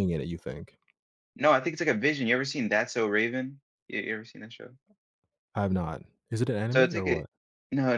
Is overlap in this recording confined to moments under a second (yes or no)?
yes